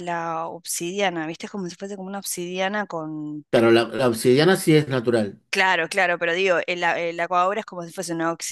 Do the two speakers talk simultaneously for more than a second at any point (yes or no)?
no